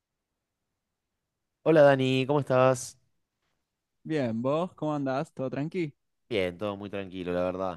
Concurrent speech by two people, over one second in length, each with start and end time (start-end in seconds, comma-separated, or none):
none